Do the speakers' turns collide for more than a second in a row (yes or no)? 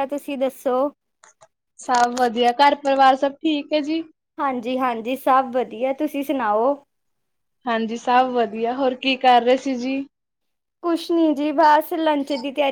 no